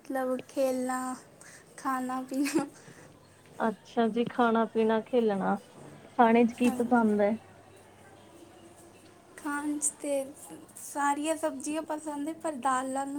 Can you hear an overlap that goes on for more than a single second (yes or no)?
no